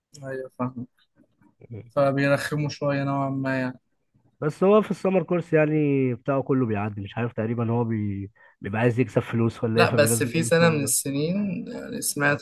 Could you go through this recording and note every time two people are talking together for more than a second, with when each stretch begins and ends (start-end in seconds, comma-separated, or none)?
9.7-10.9